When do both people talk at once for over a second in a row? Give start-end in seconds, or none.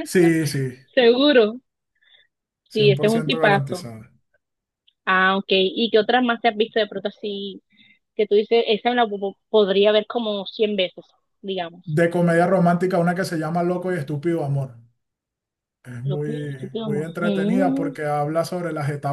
2.7-4.0, 16.0-17.9